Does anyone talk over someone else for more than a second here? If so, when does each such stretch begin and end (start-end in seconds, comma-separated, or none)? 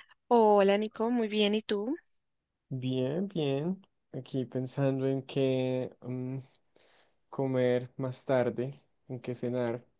none